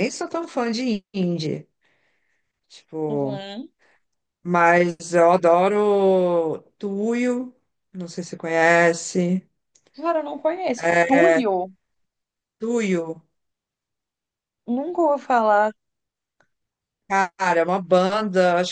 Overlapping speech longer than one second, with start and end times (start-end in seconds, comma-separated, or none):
none